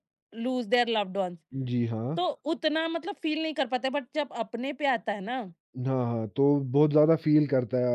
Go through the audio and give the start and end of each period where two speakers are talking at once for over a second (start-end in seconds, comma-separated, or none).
none